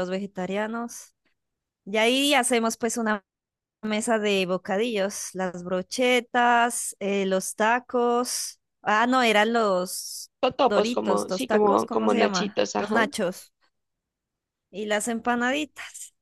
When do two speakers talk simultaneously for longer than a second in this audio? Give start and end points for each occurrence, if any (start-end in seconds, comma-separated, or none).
10.4-13.1